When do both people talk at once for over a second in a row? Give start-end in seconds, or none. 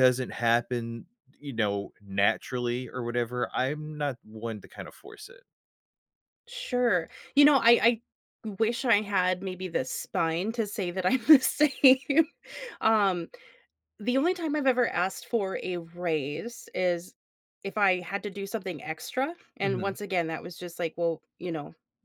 none